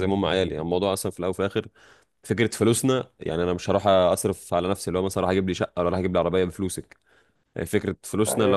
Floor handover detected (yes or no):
no